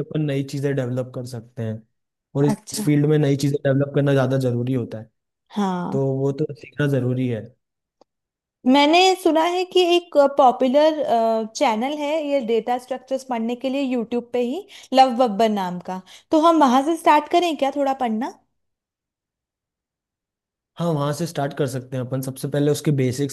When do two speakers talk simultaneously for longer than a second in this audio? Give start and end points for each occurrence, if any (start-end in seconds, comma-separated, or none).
none